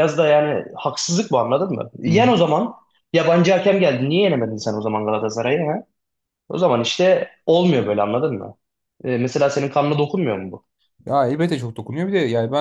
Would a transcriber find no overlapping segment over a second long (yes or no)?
yes